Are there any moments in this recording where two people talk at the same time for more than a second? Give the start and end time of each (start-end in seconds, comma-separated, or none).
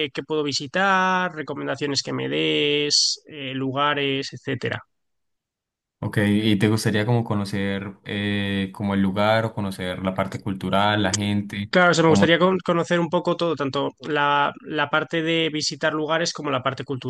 none